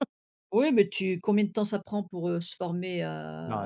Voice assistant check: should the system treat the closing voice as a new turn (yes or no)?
yes